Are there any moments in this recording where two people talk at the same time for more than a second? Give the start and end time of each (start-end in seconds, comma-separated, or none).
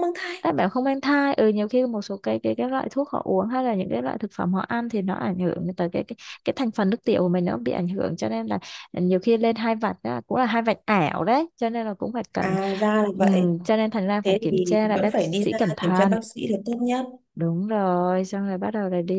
14.2-16.2